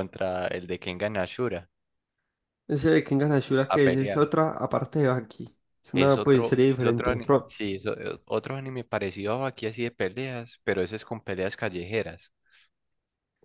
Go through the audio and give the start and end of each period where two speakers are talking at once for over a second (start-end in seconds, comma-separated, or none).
5.9-7.5